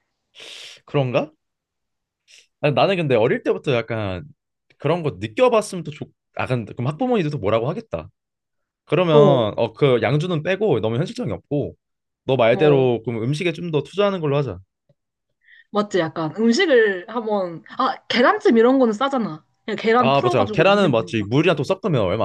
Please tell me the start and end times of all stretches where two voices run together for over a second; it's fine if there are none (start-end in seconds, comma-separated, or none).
20.0-21.2